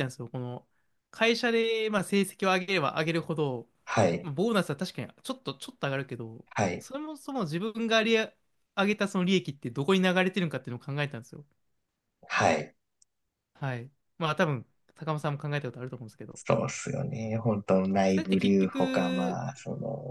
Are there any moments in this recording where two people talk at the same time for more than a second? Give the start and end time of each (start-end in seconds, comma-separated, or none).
18.1-19.4